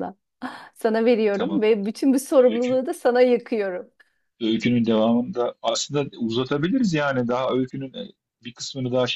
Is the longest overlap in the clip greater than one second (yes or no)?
no